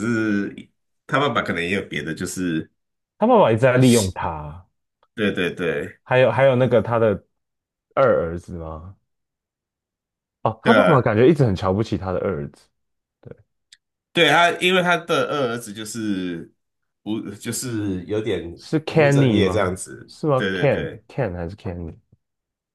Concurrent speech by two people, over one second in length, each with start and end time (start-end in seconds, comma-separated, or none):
18.9-21.1